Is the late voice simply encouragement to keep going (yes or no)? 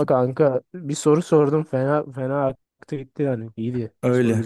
no